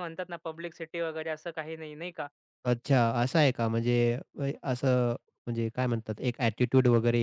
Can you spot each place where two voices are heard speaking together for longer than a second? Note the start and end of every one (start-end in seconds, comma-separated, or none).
none